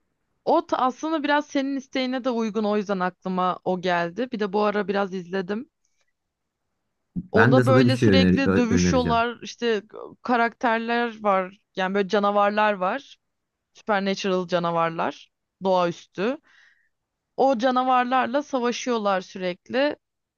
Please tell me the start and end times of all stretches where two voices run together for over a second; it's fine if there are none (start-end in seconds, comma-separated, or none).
7.3-9.2